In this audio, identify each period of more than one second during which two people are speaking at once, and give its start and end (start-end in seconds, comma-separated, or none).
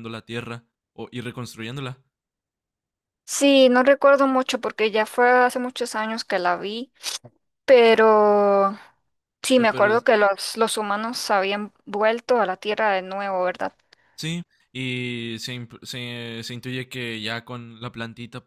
none